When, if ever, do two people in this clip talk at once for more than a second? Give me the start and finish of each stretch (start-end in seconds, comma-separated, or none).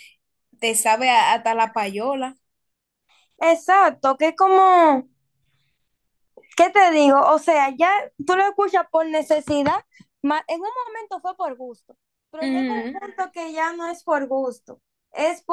none